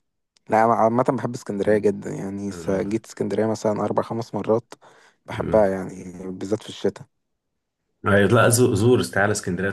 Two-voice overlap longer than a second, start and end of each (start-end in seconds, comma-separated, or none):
none